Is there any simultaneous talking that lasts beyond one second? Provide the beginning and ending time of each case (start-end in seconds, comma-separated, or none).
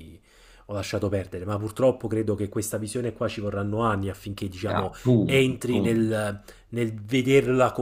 4.7-6.3